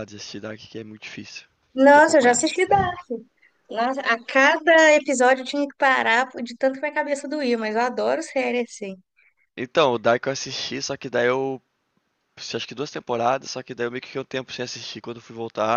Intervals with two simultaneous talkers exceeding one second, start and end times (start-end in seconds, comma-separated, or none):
none